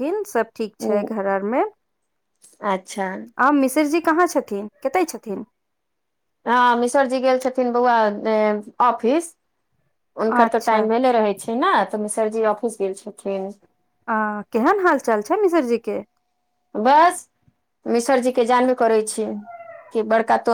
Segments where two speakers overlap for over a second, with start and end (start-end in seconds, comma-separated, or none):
none